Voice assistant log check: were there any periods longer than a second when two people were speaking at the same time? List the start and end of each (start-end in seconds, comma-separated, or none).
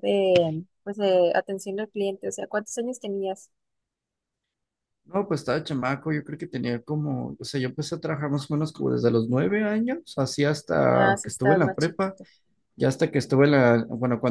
10.9-12.2